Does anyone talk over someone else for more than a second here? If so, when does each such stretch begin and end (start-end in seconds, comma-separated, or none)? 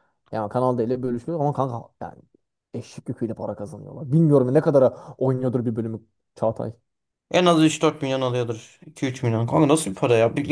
none